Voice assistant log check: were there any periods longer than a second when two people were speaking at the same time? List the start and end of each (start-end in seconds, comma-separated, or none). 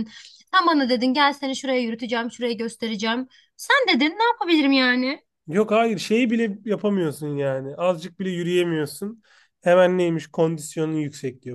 none